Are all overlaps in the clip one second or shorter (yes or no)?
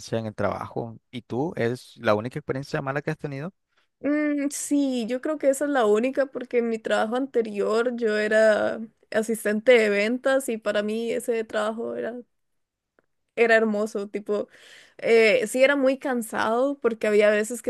yes